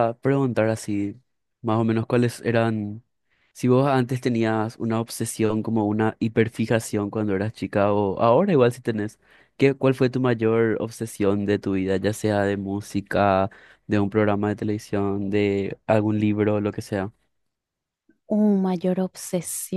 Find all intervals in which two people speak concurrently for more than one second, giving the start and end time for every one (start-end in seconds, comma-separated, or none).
none